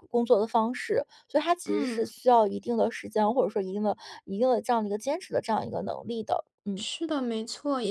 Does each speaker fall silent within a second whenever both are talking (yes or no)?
yes